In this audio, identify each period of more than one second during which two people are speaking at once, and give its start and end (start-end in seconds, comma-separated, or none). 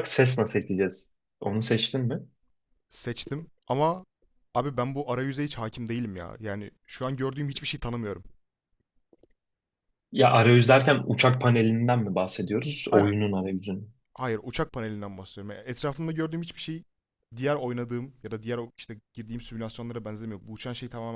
none